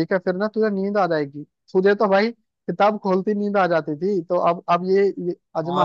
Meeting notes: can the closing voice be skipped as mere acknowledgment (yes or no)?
no